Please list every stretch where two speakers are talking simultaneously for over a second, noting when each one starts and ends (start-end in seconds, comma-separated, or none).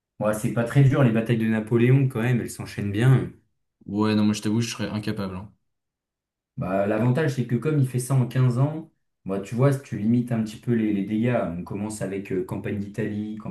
none